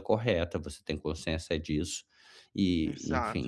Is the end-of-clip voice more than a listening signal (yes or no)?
no